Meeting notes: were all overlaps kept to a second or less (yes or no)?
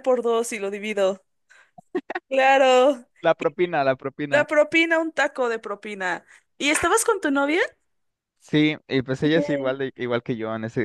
yes